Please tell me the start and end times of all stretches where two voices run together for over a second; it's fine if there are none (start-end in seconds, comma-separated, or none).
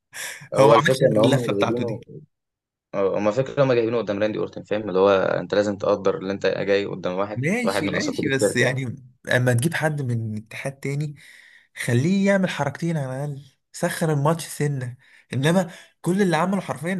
0.6-2.0, 7.3-8.8